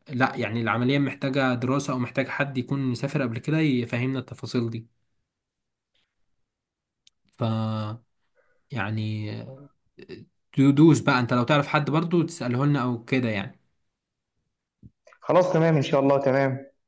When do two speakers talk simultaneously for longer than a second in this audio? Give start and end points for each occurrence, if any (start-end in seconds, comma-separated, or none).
none